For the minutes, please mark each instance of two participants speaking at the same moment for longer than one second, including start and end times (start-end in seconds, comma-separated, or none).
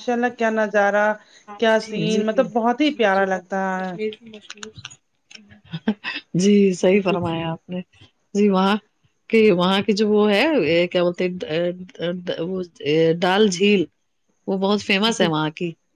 none